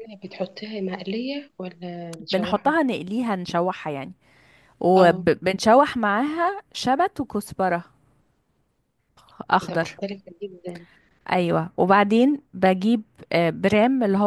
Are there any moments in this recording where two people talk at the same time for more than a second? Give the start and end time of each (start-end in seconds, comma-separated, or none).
none